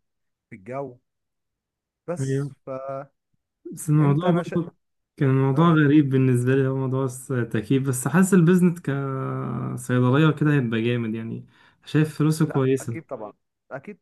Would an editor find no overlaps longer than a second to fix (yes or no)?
yes